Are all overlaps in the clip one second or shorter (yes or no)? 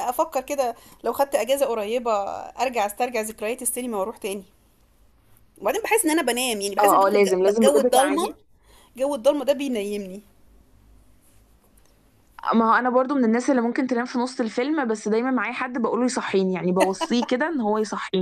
no